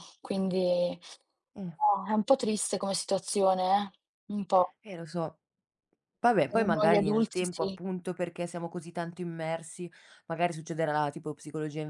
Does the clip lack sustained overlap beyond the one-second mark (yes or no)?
no